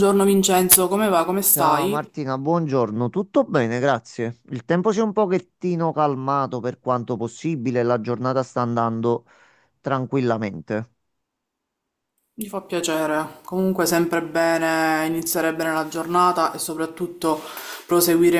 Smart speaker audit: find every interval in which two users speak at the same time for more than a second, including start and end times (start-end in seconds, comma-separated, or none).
none